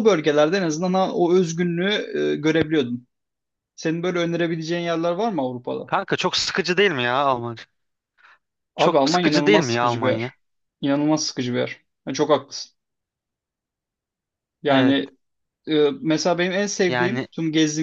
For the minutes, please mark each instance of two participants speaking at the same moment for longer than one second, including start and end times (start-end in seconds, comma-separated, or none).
8.8-10.3